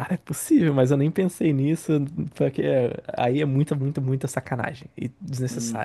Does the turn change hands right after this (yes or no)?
yes